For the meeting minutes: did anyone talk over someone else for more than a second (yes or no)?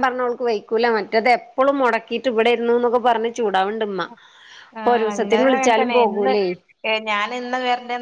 yes